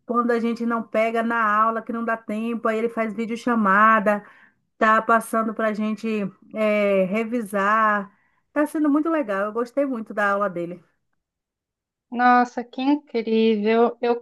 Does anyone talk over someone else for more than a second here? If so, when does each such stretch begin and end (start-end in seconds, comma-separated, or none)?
none